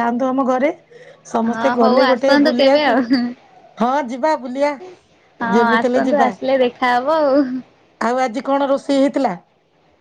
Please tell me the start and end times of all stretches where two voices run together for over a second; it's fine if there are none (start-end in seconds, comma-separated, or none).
1.4-3.0